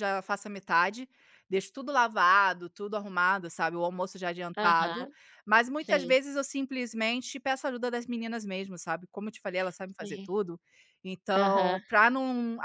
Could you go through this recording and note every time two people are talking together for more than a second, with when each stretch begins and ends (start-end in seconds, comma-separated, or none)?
none